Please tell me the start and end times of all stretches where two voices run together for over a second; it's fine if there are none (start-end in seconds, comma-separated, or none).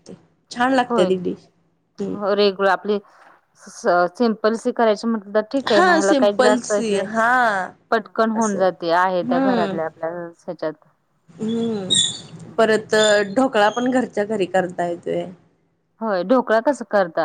5.7-7.0